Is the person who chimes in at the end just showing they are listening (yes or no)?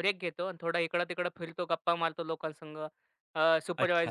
yes